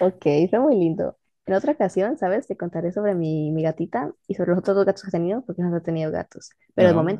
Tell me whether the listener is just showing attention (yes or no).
yes